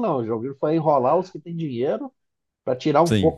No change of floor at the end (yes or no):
no